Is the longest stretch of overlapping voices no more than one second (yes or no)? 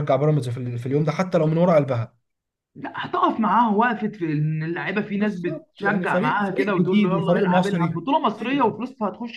no